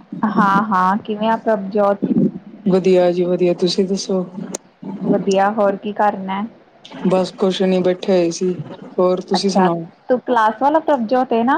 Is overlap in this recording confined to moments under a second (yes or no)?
yes